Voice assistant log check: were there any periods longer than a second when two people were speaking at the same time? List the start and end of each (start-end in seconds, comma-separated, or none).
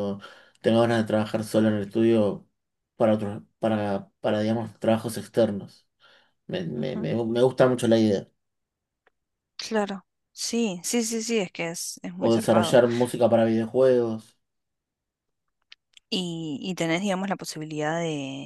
none